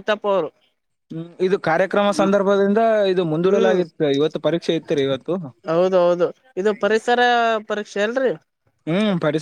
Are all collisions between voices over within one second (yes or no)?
yes